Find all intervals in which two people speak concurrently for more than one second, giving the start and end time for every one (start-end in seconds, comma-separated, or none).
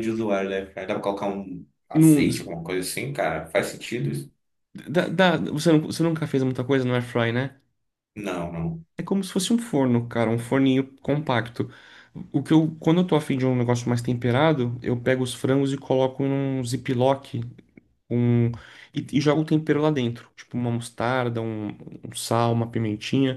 none